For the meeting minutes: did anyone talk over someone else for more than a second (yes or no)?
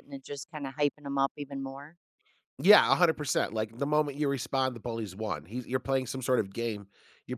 no